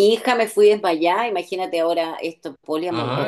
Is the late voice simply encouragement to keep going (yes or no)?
no